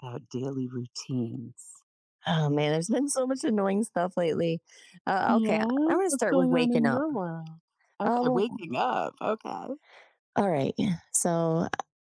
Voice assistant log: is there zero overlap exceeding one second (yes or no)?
no